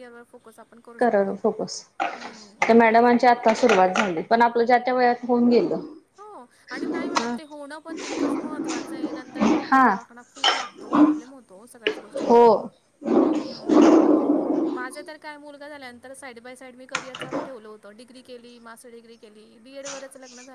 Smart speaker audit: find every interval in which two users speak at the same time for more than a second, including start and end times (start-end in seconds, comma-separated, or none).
none